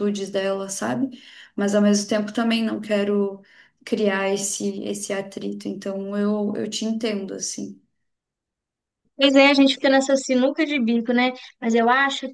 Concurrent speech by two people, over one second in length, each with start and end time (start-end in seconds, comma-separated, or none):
none